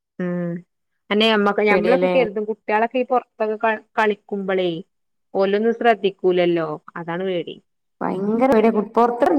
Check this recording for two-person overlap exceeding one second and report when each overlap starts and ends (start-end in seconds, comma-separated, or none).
none